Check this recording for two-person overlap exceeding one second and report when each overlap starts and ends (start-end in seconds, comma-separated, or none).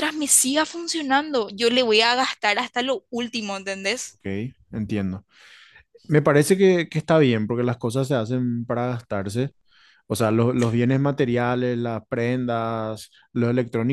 none